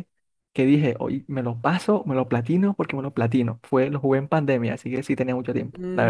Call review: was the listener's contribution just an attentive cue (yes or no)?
no